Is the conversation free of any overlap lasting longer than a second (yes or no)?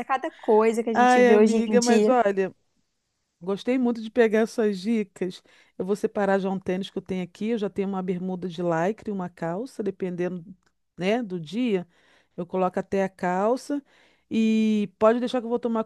no